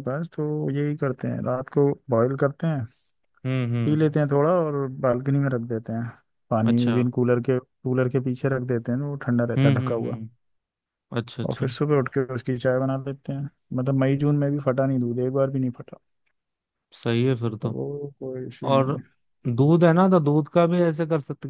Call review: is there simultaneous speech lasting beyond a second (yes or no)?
no